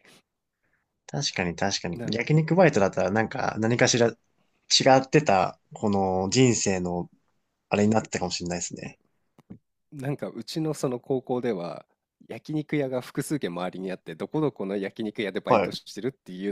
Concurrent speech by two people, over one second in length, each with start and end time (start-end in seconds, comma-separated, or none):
none